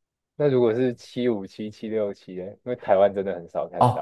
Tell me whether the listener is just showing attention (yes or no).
no